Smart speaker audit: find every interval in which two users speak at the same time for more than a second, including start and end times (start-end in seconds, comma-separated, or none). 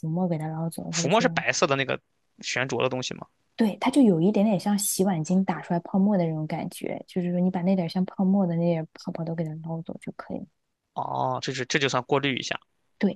none